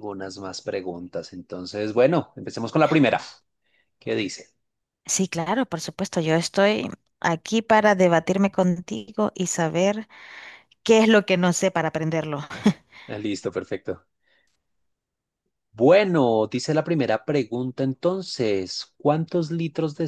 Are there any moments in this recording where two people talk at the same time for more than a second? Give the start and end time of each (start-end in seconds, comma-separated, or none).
none